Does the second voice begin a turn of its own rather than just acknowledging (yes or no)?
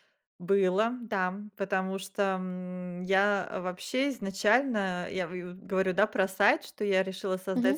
no